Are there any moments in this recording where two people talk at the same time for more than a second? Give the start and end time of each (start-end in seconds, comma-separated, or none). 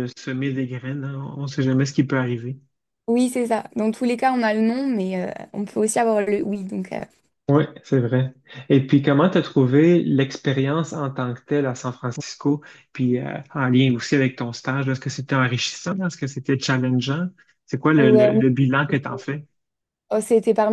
none